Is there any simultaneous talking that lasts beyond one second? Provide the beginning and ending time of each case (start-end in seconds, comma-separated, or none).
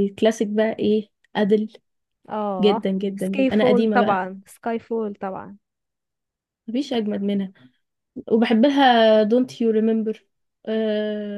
2.6-4.2